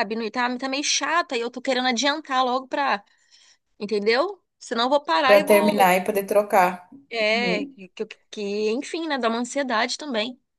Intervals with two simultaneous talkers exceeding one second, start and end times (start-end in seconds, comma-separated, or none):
none